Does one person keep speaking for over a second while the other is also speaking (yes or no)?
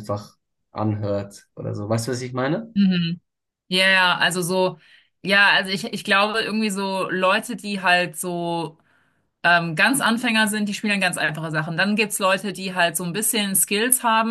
no